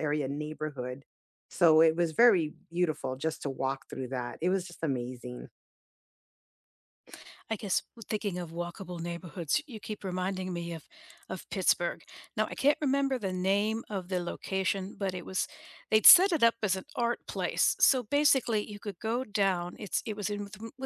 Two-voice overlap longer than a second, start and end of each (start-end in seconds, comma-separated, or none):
none